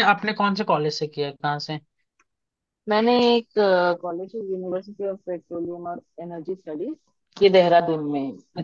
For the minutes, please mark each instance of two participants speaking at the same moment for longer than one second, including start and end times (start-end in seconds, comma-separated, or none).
none